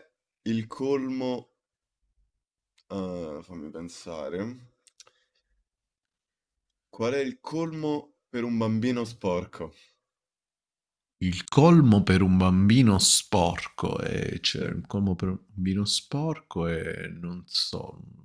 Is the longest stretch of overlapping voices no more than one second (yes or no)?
yes